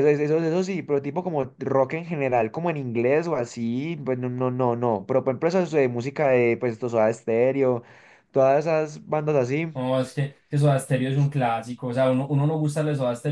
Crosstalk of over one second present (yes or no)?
no